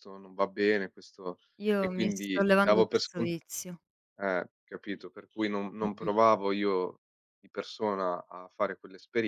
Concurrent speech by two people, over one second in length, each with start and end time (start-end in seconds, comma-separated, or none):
1.8-3.3